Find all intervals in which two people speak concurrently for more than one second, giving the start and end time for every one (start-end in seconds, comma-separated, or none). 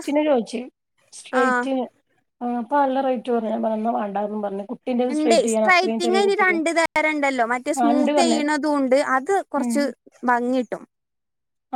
none